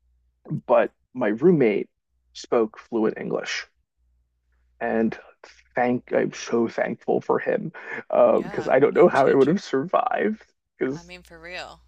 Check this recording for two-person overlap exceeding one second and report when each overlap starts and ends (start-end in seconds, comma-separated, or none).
8.3-9.6